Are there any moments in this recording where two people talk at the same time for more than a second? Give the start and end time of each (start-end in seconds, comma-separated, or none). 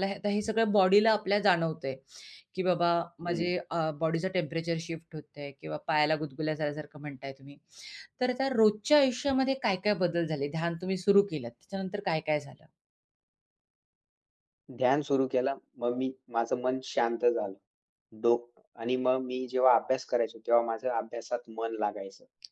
none